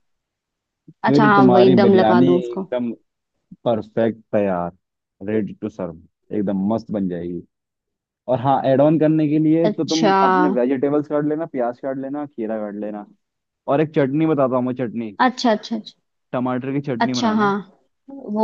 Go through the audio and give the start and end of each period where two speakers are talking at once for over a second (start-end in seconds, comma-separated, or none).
1.1-2.7